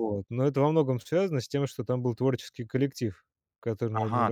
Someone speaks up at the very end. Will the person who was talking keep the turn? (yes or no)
no